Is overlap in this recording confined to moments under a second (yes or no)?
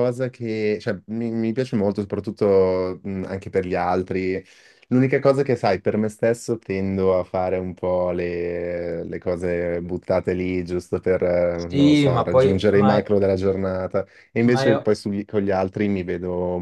no